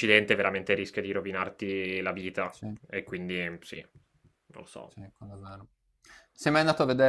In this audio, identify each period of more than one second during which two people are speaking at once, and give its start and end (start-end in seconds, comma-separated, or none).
none